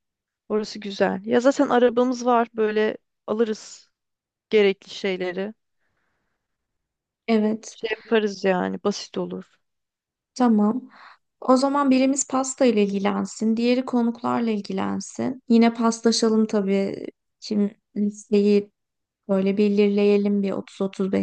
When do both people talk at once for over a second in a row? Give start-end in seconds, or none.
none